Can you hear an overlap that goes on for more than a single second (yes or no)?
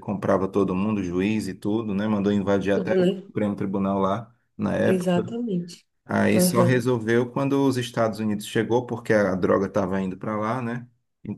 no